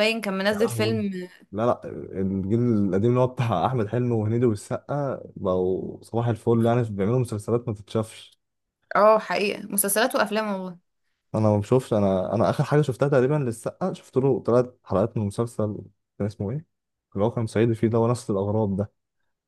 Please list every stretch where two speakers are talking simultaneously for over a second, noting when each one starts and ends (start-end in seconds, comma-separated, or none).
none